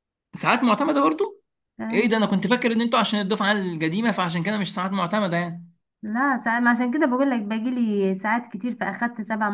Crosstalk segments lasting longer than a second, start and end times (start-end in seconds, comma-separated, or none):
none